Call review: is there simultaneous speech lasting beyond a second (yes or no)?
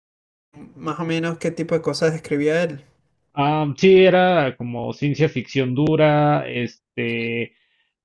no